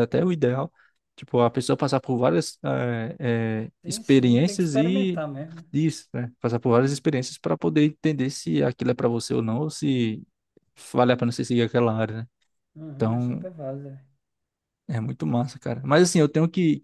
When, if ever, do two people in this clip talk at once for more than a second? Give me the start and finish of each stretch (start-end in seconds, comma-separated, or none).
3.8-5.2